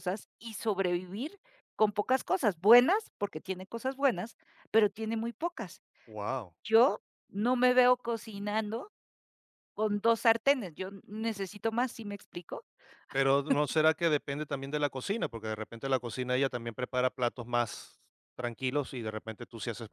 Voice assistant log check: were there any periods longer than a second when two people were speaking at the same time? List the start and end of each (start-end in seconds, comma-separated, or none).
none